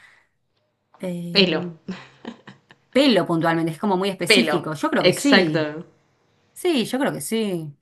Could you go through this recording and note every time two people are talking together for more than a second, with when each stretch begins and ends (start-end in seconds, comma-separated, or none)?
4.2-5.7